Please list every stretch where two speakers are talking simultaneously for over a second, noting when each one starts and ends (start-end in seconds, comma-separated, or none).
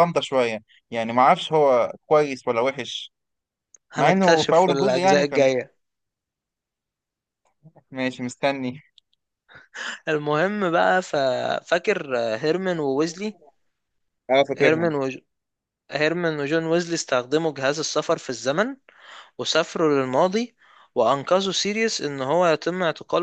3.9-5.5